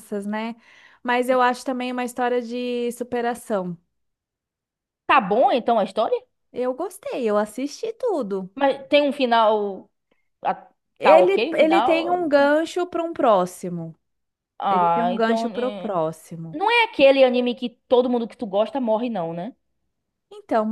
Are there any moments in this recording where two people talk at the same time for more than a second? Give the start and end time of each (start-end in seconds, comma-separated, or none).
11.0-12.5, 14.7-15.9